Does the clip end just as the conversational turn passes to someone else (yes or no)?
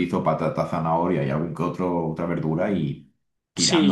yes